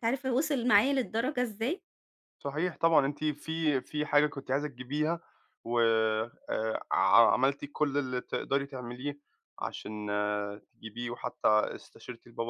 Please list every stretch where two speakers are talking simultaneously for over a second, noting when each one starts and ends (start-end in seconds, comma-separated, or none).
none